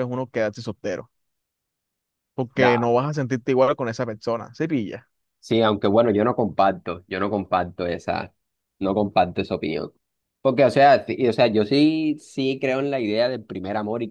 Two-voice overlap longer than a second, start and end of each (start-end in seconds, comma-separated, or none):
none